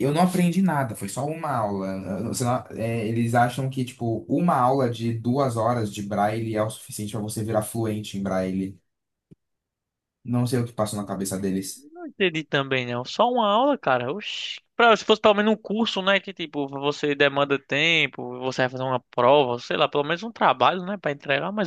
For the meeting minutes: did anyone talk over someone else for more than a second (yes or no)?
no